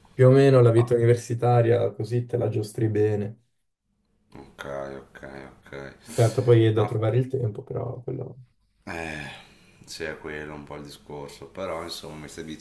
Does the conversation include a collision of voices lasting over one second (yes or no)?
no